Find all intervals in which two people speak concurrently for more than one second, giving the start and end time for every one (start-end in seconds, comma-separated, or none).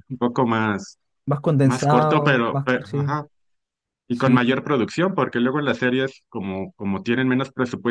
1.6-3.2